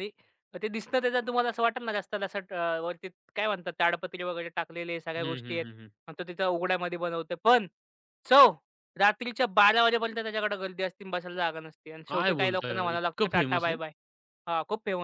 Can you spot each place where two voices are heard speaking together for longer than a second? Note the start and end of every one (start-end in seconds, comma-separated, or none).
12.1-13.8